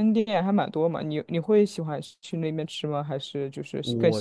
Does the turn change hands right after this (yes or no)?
yes